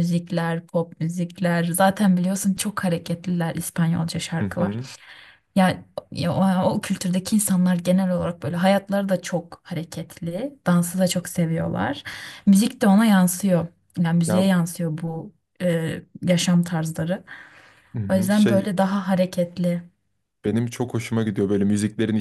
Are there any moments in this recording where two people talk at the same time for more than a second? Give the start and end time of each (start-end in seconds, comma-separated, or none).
none